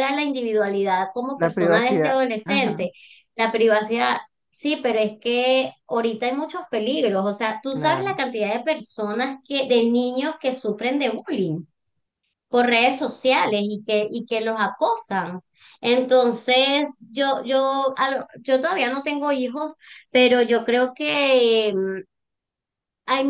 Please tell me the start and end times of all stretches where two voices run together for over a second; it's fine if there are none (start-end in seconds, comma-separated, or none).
1.4-2.9